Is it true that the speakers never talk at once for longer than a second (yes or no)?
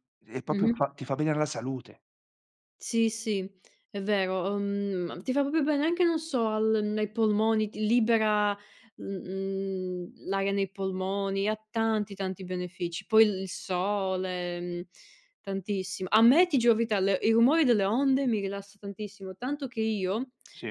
yes